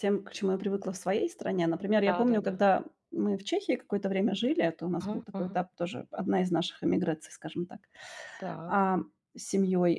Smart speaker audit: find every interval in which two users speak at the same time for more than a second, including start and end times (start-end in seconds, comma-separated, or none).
none